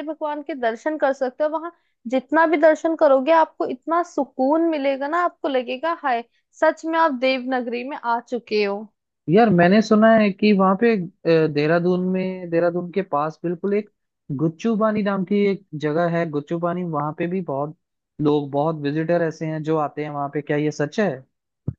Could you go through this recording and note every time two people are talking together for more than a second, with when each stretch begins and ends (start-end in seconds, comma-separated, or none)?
none